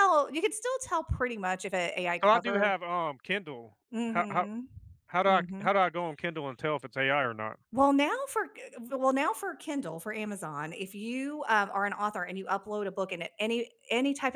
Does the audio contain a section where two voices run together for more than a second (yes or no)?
no